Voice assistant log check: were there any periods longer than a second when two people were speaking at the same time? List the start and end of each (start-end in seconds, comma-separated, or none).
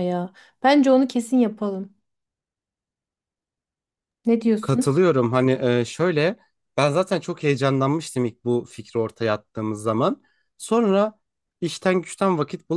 none